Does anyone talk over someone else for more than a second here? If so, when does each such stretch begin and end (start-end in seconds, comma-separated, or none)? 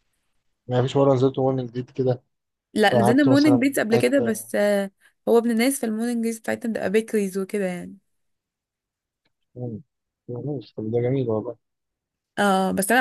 2.9-4.5